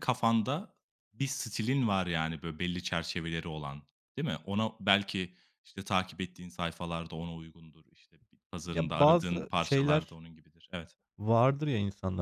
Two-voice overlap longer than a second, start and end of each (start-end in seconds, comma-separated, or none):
8.7-10.2